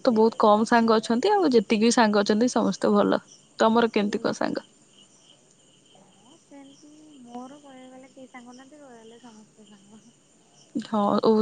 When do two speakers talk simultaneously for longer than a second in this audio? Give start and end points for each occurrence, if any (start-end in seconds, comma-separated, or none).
none